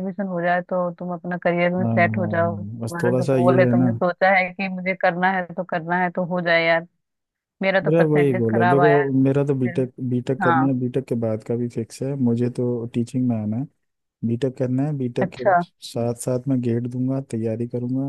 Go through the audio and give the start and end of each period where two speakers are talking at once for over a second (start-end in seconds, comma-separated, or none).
1.8-3.9, 7.8-9.8